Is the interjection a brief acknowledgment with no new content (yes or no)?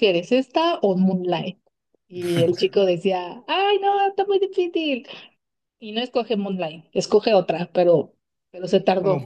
no